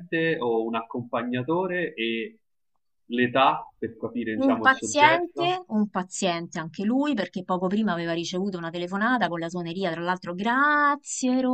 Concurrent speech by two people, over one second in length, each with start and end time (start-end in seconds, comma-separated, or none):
4.3-5.6